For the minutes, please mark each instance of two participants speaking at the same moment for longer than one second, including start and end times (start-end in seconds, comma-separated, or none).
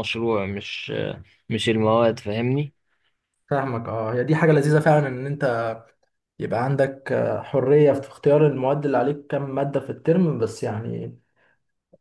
none